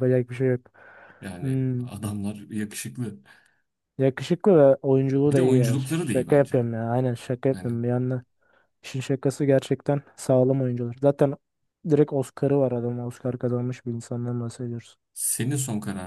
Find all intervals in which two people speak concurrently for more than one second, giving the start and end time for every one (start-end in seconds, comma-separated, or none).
5.3-6.6